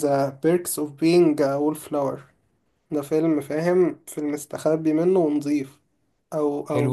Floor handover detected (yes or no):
no